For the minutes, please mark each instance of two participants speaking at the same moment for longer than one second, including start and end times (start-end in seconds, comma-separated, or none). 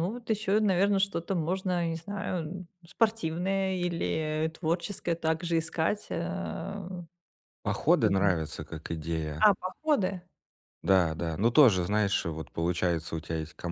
none